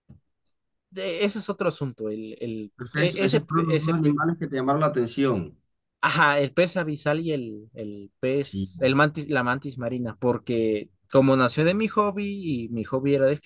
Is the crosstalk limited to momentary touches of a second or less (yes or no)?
no